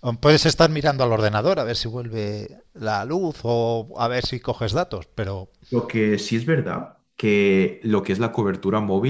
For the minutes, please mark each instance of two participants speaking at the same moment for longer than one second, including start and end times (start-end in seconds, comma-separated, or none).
none